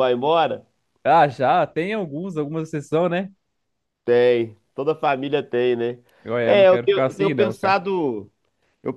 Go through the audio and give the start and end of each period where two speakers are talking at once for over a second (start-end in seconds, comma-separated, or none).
6.4-7.8